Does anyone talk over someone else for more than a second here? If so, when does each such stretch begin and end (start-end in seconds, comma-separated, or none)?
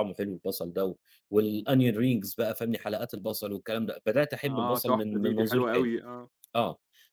4.4-5.9